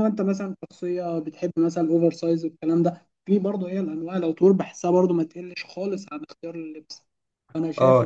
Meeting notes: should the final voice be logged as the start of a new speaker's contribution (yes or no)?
yes